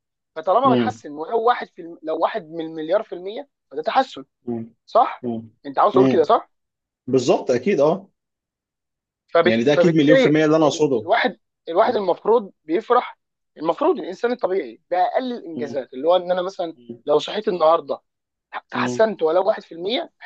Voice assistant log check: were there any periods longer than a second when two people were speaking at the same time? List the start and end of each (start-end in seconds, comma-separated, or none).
9.4-11.1